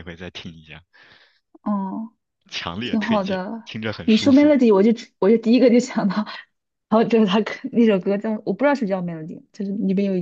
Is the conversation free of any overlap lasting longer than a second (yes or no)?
no